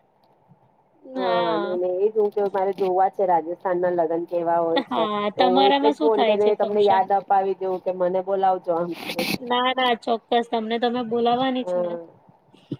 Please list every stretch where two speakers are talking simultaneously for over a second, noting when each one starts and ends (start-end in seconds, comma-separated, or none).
4.9-7.0